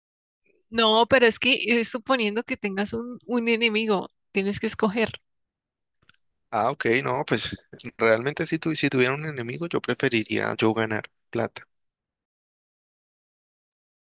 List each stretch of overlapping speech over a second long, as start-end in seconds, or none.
none